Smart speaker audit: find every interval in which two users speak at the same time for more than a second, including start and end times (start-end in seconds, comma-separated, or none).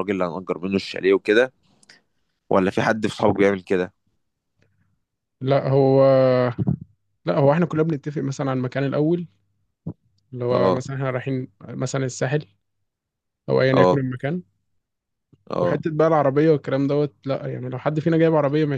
none